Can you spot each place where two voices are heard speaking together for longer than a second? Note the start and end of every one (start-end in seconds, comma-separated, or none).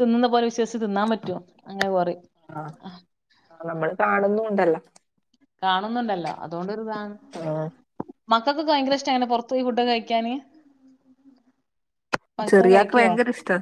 none